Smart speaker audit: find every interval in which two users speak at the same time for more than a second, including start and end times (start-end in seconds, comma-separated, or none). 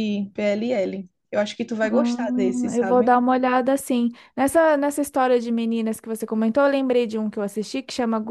1.8-3.1